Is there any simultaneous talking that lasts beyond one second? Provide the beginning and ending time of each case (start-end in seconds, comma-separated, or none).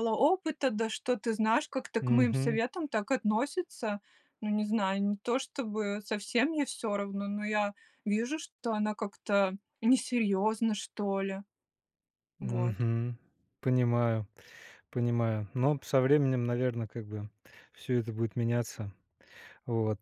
none